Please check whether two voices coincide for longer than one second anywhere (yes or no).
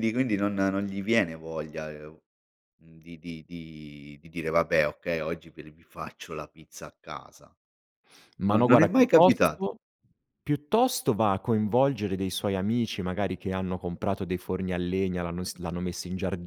yes